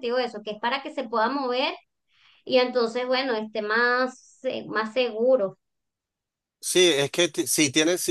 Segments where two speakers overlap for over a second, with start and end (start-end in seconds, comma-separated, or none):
none